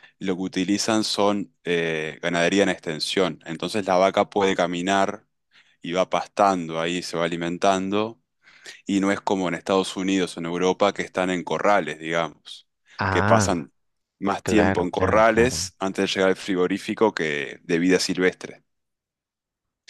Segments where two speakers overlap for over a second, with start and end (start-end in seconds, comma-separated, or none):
14.4-15.7